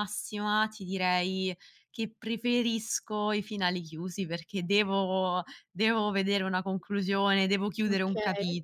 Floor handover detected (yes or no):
no